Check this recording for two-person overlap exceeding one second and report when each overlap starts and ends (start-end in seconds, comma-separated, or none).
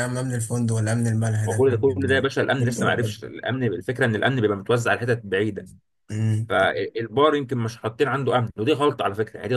1.4-3.2